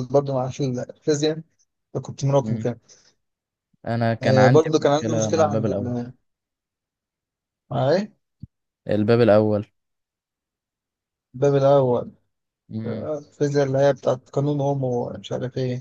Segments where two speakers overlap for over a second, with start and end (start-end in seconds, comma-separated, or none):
4.2-5.9